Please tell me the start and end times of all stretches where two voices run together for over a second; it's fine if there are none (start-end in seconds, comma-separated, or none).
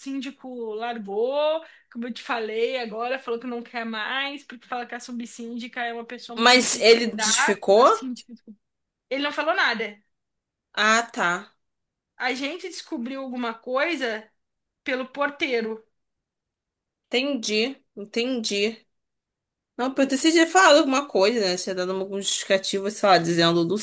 6.4-7.9